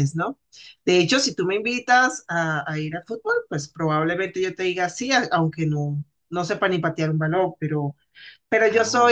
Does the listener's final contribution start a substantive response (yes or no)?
no